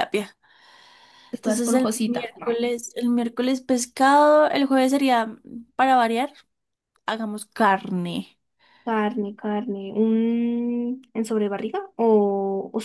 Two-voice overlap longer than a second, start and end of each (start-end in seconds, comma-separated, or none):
1.4-2.6